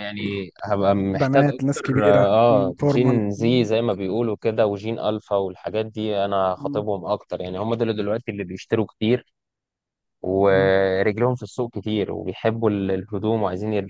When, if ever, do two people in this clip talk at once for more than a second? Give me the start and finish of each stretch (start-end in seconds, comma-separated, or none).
1.1-3.7